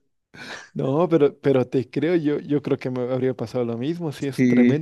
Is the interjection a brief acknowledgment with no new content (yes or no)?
yes